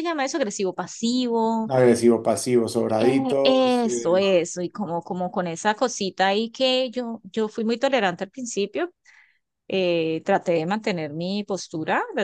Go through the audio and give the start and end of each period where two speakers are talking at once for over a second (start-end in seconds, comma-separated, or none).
3.0-4.4